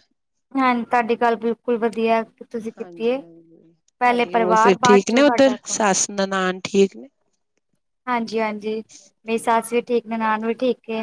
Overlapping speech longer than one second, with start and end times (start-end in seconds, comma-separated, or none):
4.0-5.8